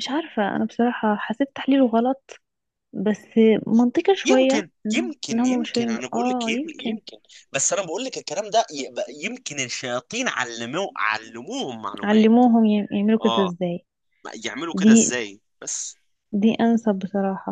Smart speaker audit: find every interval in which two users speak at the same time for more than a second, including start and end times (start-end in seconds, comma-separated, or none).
4.2-7.0